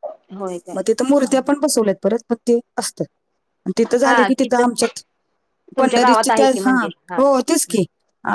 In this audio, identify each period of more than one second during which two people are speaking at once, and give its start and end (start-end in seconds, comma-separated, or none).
5.8-7.8